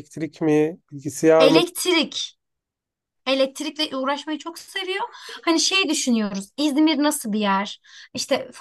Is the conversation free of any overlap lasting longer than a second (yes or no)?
yes